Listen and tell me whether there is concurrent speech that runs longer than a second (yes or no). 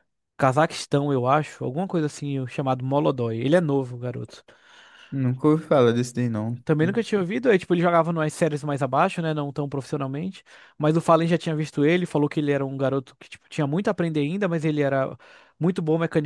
no